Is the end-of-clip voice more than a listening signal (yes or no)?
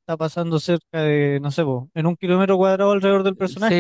yes